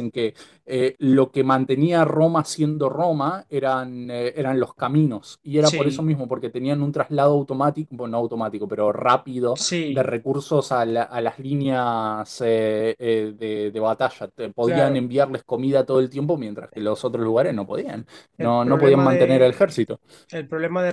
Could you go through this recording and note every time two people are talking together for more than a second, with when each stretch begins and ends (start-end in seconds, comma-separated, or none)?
18.4-19.8